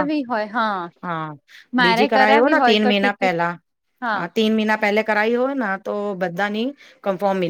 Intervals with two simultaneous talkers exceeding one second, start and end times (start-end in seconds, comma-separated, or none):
1.8-3.4